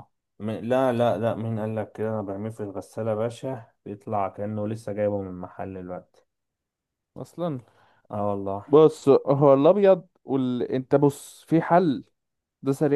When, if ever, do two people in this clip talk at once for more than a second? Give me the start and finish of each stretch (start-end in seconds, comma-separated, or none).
none